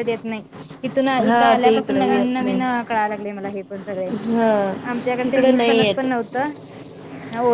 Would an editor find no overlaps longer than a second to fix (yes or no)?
no